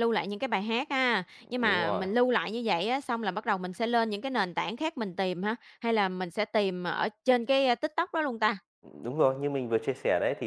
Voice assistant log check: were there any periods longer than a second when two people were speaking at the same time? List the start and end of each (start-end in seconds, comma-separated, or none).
none